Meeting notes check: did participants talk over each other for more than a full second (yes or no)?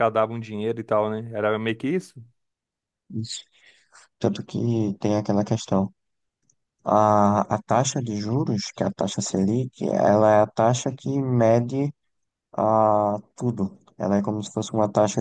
no